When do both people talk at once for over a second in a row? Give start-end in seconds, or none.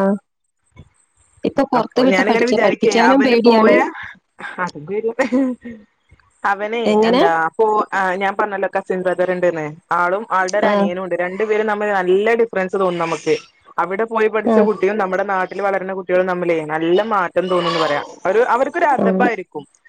1.8-3.7